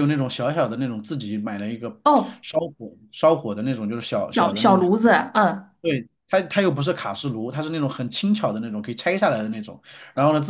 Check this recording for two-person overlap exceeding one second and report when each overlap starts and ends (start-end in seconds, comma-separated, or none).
none